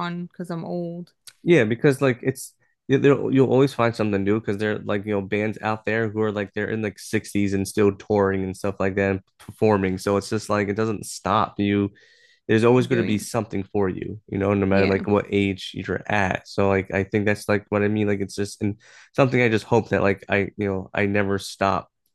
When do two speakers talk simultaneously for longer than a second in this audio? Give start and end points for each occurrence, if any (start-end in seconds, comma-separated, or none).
none